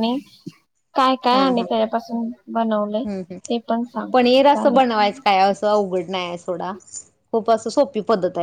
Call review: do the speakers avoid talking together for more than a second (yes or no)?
yes